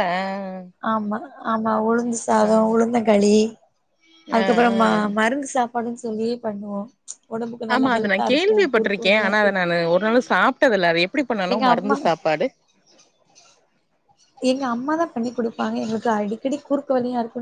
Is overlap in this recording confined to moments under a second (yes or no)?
no